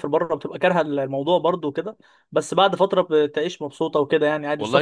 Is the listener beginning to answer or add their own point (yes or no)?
yes